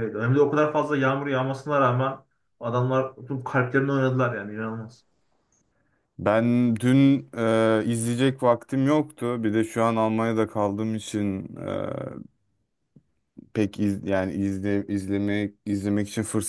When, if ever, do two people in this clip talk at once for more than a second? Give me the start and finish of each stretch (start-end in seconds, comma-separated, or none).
none